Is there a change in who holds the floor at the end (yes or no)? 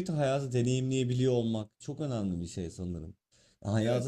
no